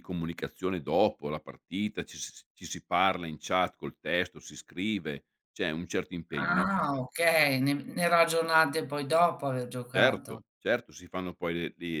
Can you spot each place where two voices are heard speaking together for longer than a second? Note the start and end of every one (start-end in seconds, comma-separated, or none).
none